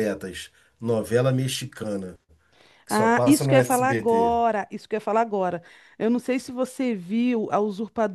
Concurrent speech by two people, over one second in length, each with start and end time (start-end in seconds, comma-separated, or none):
2.9-4.4